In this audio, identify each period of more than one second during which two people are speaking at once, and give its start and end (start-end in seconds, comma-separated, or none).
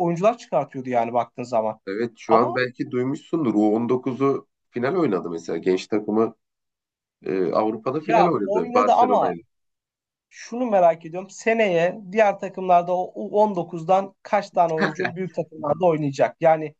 8.0-9.3